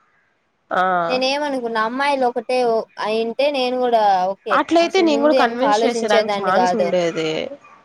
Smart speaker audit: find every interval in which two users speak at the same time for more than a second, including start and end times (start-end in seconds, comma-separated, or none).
4.6-6.9